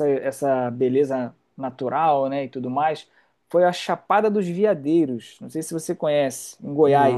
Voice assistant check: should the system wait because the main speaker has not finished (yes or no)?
no